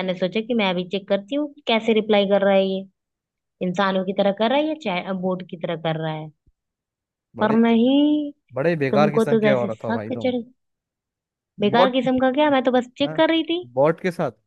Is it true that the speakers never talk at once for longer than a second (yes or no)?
no